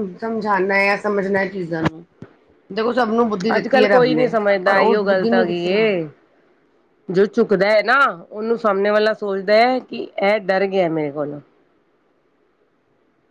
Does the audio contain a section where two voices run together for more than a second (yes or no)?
yes